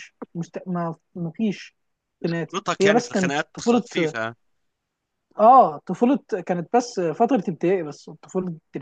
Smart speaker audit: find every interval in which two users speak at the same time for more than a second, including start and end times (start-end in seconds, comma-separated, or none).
2.3-3.8